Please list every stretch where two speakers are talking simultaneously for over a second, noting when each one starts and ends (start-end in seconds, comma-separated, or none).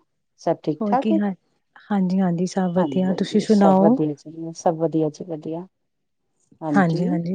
none